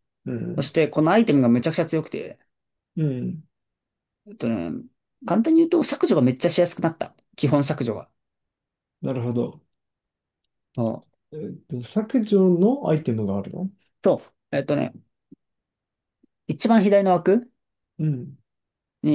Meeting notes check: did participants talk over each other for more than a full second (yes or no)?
no